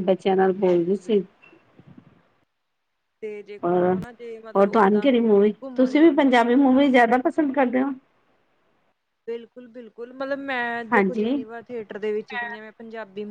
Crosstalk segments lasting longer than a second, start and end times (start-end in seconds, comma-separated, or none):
4.6-6.2